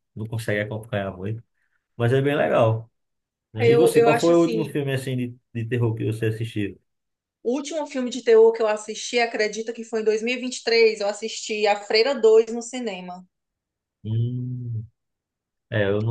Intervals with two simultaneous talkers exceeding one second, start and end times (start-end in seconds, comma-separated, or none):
3.6-4.8